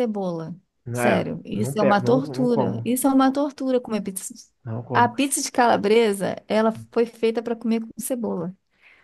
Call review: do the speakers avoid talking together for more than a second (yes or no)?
no